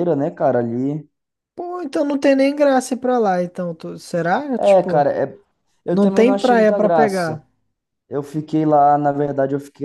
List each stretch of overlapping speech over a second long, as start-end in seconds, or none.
5.9-7.4